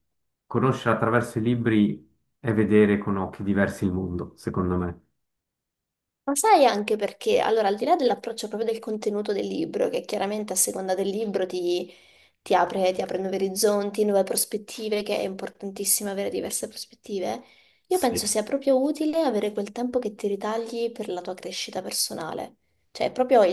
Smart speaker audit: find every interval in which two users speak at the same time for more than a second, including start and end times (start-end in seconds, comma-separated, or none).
none